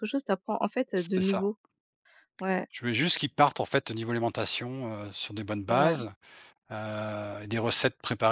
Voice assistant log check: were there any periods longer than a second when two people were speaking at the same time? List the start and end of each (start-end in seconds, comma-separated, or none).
none